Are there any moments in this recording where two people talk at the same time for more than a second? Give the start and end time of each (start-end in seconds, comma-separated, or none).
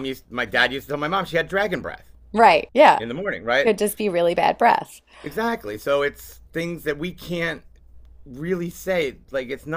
none